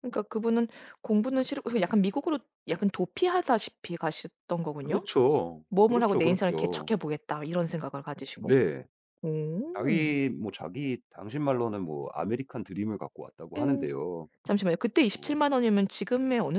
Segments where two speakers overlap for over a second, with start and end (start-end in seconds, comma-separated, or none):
5.7-6.9